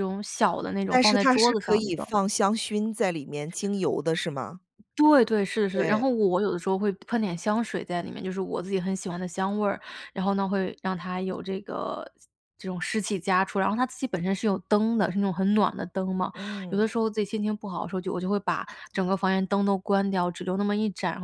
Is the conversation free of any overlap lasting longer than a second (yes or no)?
no